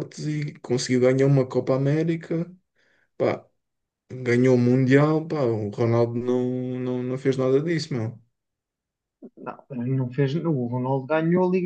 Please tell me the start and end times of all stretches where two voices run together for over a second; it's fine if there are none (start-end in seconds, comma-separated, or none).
none